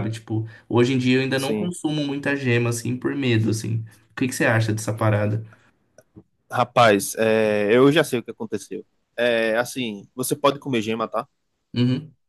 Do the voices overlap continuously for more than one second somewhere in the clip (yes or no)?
no